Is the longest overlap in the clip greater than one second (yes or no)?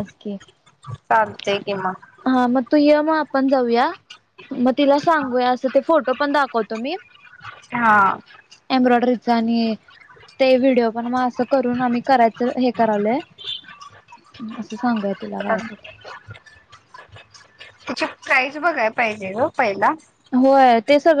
no